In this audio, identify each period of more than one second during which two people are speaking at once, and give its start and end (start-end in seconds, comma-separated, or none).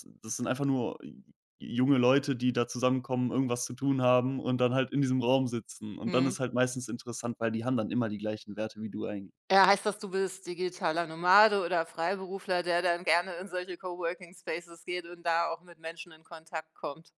none